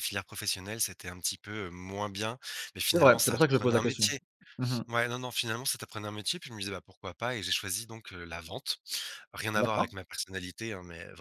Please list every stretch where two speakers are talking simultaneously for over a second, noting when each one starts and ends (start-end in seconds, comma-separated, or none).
2.9-4.1